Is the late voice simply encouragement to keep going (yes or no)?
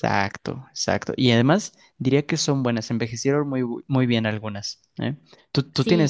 no